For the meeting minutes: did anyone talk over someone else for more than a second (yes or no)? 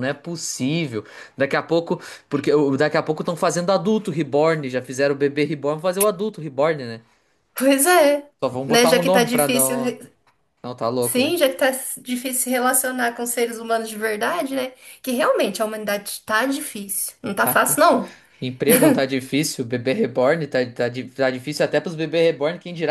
yes